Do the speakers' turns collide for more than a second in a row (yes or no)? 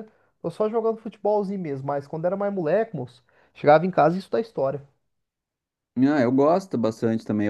no